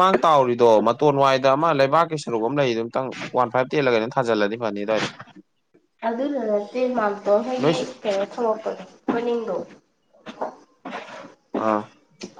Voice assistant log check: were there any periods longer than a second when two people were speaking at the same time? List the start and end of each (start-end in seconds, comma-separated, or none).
none